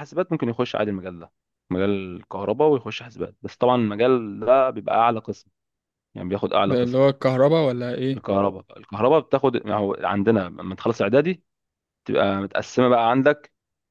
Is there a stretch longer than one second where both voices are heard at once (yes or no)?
no